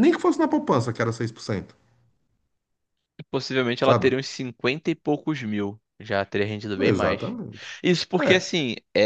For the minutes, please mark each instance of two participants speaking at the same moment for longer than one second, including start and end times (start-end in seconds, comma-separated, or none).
none